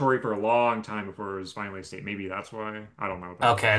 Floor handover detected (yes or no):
yes